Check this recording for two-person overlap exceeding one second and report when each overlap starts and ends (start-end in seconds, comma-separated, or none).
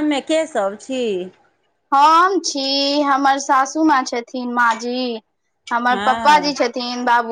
none